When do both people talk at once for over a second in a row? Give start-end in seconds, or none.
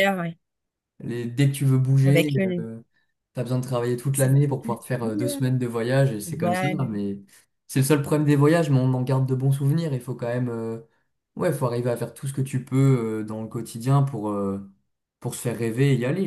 none